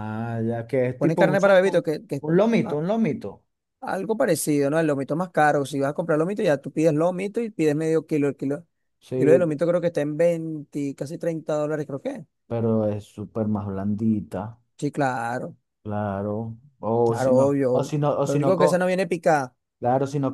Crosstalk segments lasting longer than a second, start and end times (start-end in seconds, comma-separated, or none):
1.0-2.8, 17.0-18.9